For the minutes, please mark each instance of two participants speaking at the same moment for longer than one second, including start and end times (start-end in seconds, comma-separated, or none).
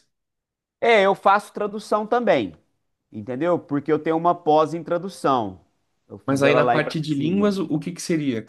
6.3-7.5